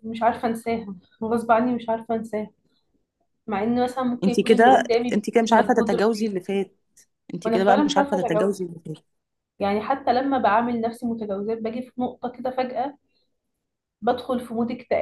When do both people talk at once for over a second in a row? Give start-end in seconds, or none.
4.2-6.3, 7.4-8.6